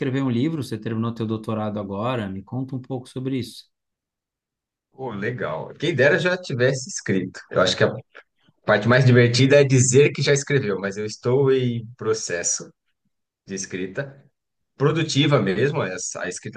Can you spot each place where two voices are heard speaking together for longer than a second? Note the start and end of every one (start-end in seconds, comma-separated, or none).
none